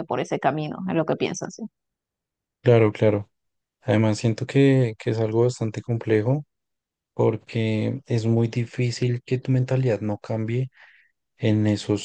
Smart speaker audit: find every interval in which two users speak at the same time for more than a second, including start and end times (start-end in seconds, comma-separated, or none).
none